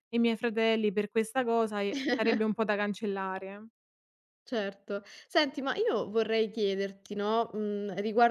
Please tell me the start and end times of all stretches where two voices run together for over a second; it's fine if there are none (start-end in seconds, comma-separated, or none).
none